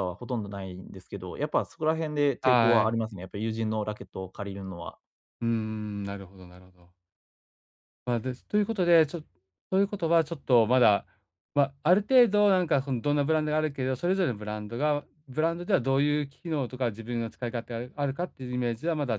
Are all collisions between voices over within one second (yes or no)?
yes